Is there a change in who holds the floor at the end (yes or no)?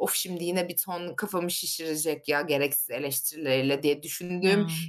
no